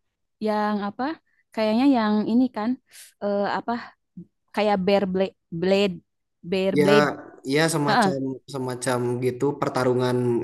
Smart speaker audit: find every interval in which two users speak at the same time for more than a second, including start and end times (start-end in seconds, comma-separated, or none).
none